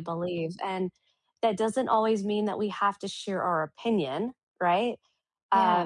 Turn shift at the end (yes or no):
no